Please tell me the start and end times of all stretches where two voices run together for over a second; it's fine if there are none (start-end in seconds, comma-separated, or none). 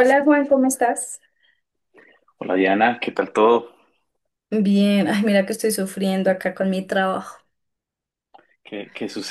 none